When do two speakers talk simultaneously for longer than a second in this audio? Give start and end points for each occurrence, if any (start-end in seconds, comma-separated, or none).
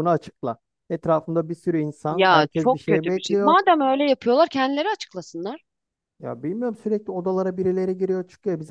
2.1-3.6